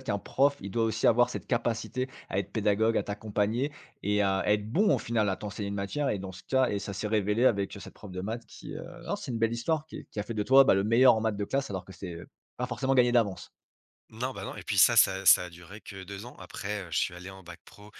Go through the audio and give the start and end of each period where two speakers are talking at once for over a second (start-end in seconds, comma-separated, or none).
none